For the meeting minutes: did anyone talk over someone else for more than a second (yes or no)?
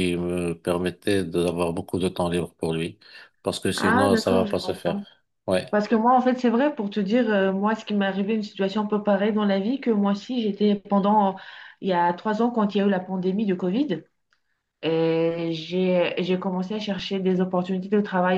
yes